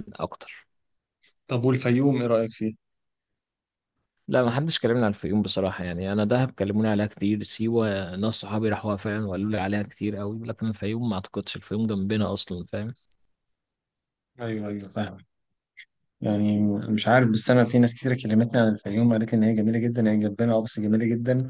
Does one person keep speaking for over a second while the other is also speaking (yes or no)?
no